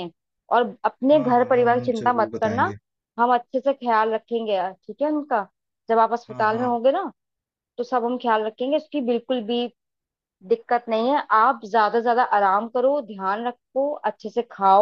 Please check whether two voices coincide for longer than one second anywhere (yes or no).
yes